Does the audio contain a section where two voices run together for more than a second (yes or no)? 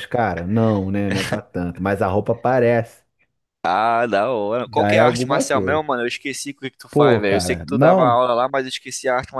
yes